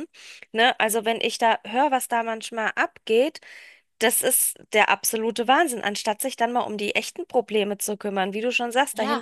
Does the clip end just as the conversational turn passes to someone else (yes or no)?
no